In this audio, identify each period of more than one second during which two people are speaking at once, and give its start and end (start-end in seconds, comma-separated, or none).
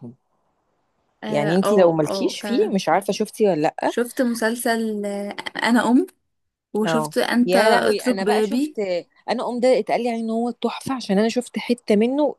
1.3-2.8, 6.8-8.8